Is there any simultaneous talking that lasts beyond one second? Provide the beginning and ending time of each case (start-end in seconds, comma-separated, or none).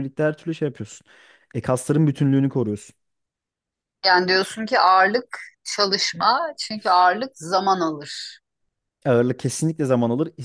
none